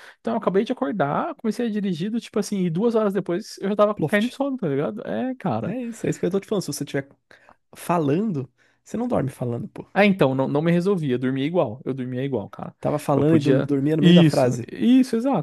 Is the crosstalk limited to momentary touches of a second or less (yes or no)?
no